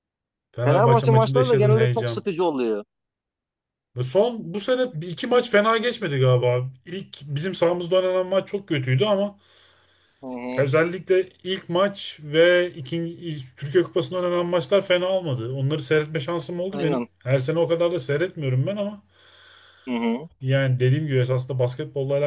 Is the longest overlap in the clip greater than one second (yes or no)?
yes